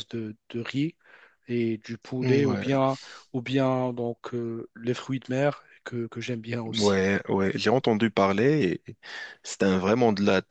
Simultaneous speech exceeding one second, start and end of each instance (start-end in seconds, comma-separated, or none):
none